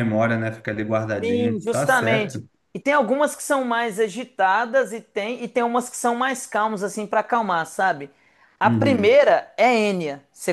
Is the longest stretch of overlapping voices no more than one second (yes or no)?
no